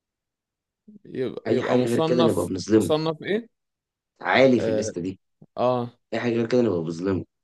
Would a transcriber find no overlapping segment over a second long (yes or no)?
no